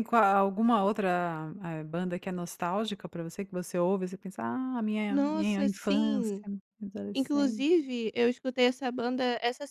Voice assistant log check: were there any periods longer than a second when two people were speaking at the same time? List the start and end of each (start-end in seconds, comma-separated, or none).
5.1-6.5